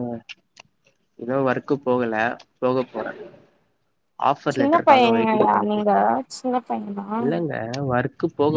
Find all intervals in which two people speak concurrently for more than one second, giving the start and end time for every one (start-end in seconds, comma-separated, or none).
4.5-5.9